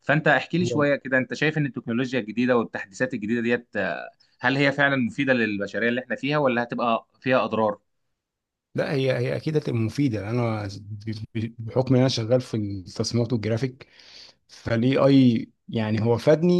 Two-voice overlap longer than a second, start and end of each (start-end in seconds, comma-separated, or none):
none